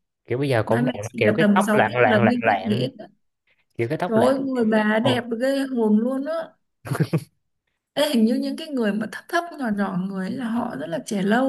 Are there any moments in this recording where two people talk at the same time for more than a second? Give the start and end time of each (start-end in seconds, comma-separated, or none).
0.7-2.9